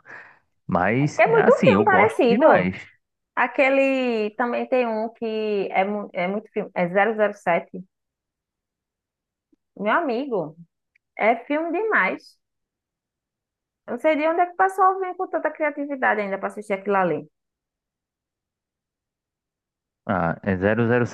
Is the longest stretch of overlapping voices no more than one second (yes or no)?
no